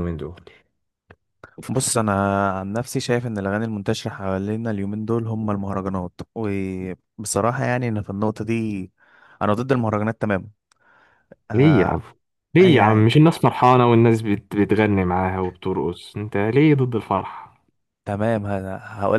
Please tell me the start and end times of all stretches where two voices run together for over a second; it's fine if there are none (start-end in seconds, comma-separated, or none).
none